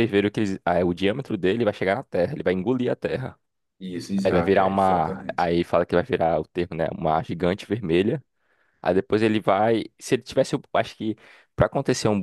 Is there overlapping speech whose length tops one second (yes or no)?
yes